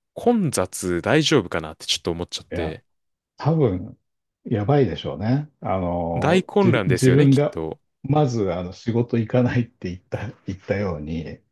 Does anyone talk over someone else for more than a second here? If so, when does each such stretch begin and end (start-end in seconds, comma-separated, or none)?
6.1-7.6